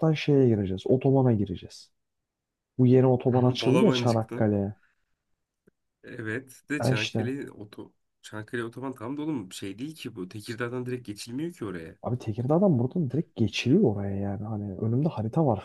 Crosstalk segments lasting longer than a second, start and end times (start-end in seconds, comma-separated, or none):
3.3-4.5